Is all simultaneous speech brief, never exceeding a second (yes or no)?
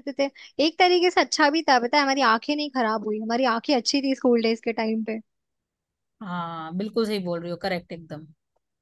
yes